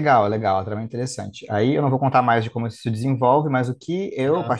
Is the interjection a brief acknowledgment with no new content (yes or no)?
yes